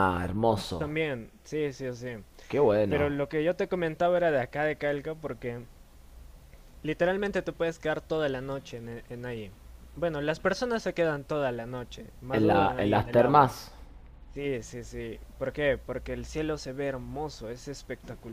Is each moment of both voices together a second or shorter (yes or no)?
no